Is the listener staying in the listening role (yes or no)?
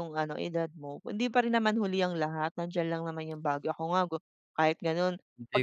no